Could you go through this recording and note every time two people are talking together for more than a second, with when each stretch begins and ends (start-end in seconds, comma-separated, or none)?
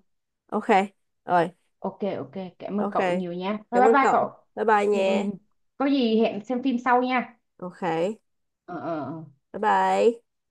none